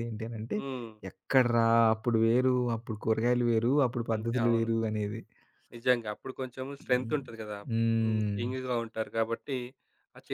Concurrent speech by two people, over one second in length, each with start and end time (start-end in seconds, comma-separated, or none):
none